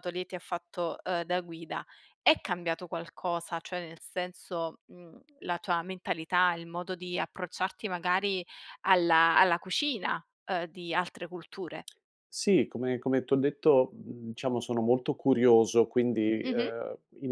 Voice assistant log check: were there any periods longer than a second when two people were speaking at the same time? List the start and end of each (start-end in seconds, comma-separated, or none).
none